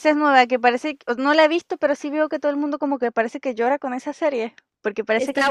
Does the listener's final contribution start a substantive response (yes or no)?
yes